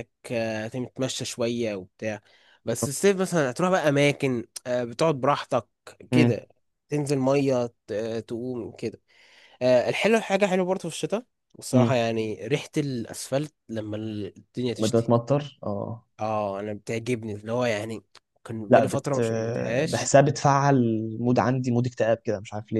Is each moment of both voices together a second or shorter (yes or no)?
yes